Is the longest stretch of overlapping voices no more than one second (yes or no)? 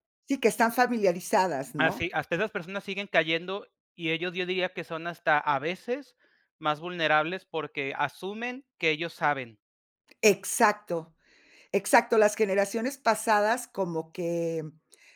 yes